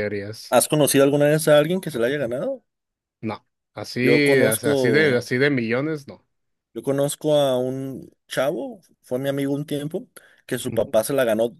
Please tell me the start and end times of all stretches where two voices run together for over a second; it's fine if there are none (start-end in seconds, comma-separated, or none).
4.0-5.3